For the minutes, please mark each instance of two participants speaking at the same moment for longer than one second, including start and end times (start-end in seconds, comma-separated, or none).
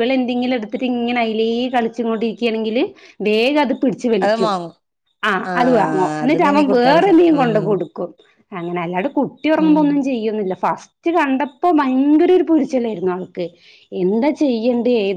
5.5-7.7